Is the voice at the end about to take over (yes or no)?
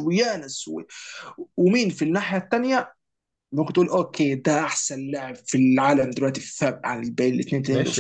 yes